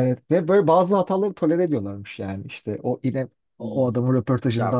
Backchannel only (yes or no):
no